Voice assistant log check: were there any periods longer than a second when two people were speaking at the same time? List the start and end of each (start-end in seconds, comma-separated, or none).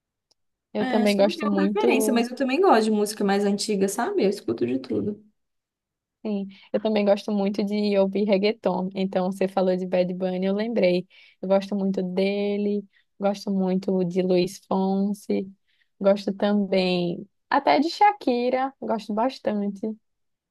0.8-2.3